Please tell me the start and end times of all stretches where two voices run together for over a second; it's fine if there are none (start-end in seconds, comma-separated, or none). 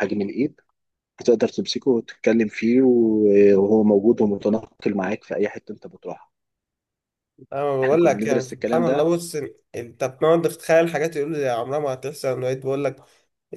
7.8-9.1